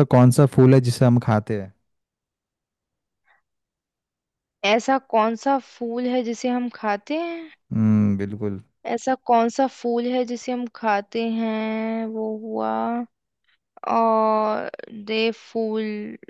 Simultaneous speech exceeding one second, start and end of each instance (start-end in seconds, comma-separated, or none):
none